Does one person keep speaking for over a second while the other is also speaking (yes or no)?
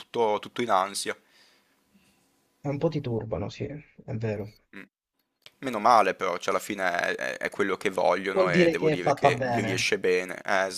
yes